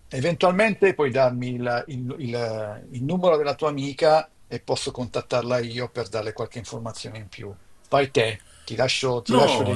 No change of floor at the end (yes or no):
no